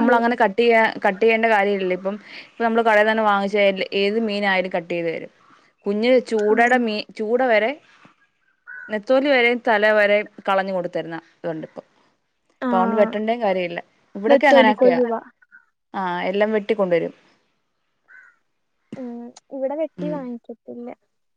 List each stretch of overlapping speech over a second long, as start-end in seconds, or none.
none